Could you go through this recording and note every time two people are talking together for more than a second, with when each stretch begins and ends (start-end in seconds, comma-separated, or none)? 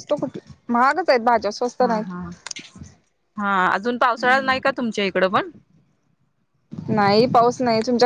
none